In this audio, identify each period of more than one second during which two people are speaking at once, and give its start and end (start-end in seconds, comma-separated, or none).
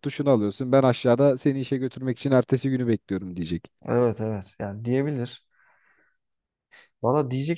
none